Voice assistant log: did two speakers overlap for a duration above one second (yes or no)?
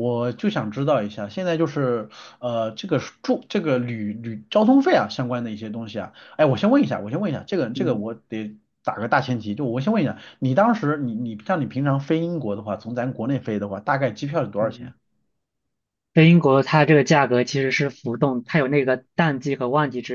no